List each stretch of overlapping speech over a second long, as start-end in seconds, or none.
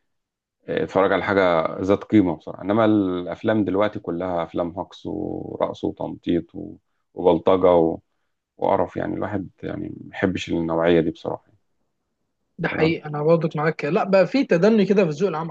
none